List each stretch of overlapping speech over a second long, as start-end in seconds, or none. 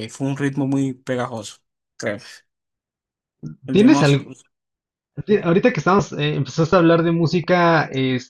none